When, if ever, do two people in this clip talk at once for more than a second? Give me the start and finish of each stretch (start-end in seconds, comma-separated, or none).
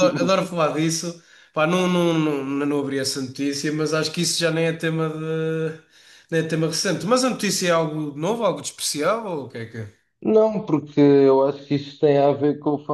none